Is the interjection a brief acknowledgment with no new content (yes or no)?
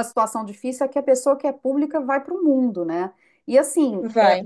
yes